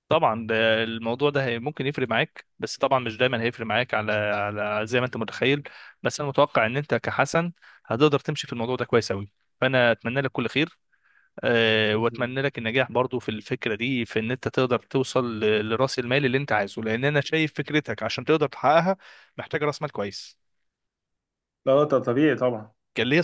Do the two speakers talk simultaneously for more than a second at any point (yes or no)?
no